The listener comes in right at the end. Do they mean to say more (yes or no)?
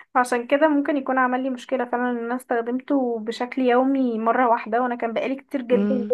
no